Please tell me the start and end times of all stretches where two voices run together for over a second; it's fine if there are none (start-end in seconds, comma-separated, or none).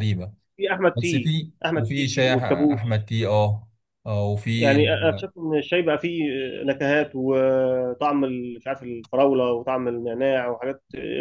1.0-3.0